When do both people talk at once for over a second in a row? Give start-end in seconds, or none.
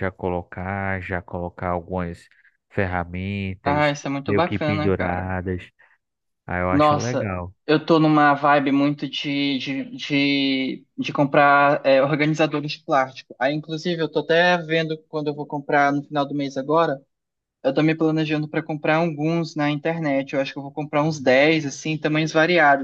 3.6-5.3